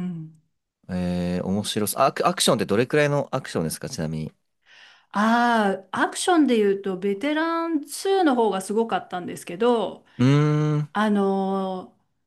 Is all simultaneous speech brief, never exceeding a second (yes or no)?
yes